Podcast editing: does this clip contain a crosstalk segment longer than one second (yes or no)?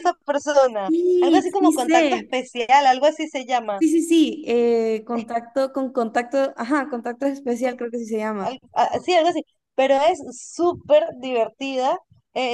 yes